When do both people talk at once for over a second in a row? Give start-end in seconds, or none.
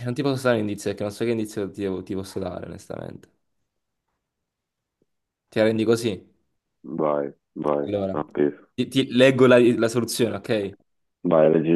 none